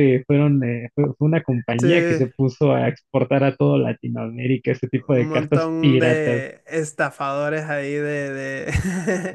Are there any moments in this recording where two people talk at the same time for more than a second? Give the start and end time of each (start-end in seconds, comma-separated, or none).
5.1-6.5